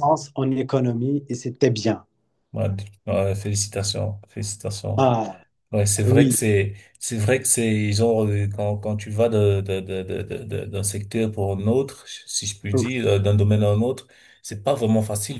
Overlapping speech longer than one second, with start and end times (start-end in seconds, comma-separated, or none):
none